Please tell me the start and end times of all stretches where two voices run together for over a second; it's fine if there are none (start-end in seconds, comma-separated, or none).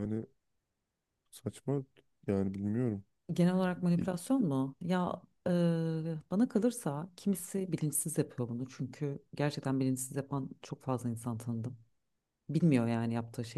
none